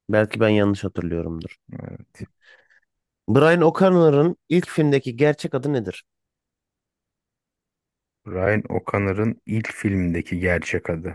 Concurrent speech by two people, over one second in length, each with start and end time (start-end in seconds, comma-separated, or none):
none